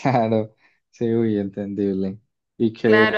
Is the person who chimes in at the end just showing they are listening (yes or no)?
no